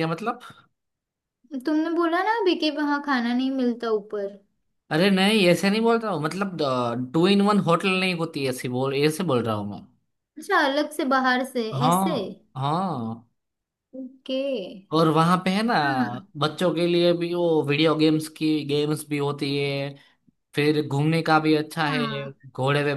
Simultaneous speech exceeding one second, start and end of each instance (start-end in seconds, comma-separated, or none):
none